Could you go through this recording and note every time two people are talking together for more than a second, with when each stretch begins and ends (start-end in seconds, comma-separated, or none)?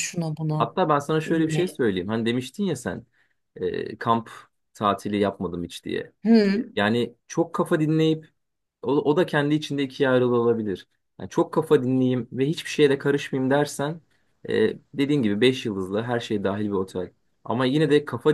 none